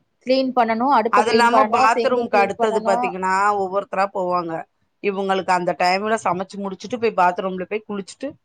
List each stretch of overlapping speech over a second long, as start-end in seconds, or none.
1.2-3.0